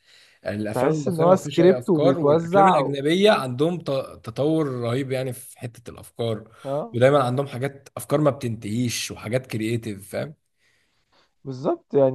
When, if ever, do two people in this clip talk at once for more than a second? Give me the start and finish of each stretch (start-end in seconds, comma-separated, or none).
0.7-3.0